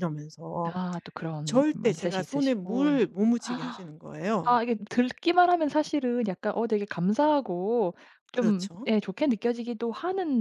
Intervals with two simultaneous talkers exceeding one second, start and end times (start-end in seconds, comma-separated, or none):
1.4-3.0